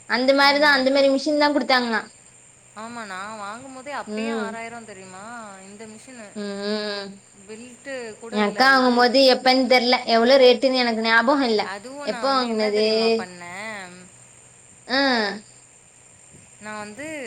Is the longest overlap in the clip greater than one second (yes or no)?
no